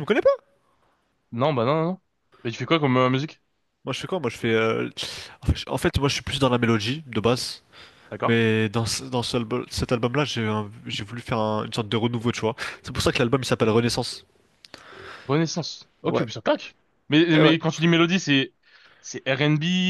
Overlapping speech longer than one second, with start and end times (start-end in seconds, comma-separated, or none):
none